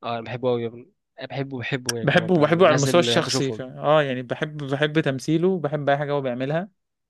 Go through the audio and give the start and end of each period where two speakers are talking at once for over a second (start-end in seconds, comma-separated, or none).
2.0-3.6